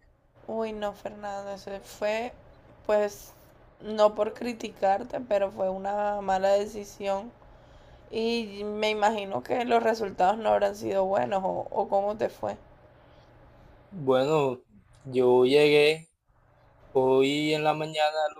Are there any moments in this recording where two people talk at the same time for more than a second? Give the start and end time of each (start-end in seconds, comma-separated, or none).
none